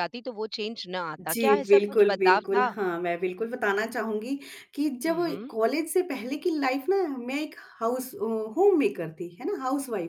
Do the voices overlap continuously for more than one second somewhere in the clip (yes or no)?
yes